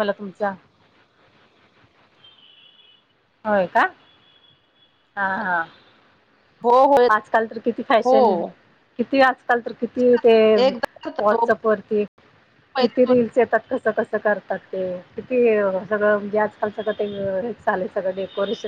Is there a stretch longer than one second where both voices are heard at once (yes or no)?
no